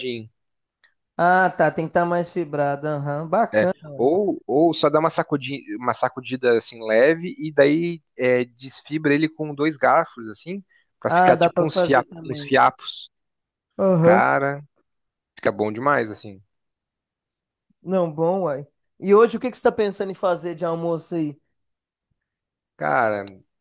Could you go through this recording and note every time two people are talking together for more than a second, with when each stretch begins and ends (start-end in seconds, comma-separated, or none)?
11.1-12.6